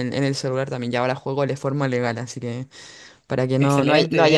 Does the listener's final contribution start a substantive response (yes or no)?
no